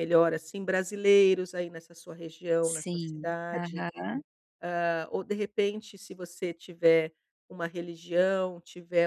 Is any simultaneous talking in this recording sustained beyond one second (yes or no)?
yes